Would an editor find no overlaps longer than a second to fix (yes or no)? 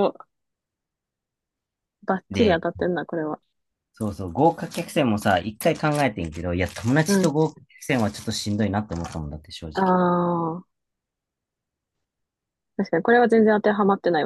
yes